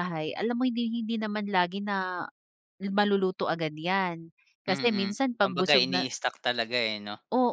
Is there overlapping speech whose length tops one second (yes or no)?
yes